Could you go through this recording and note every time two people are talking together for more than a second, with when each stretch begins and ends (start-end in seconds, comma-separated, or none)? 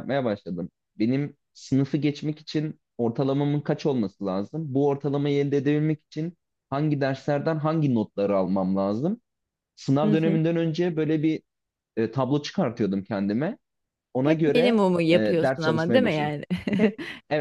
14.2-16.3